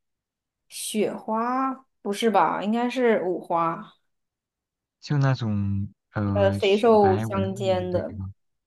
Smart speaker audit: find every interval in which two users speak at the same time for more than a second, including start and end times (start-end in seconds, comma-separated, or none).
6.3-8.1